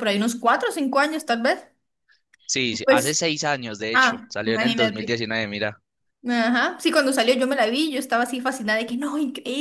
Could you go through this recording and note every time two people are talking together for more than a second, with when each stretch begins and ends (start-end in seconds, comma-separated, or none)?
3.9-5.2